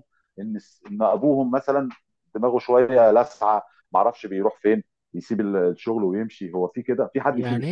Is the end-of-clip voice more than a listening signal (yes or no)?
yes